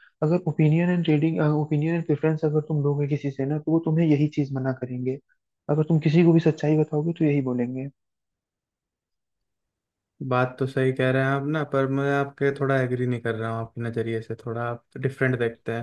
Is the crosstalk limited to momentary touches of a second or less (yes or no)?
yes